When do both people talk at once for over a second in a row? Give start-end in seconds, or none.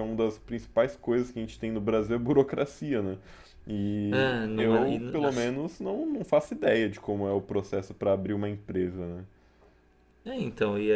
4.1-5.5